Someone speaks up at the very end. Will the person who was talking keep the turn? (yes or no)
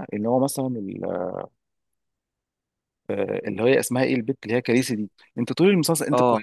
yes